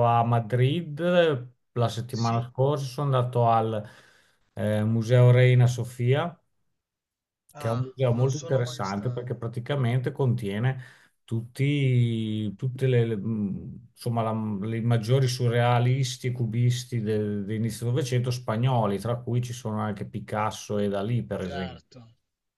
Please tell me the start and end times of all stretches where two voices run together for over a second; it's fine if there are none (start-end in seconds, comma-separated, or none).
7.5-9.3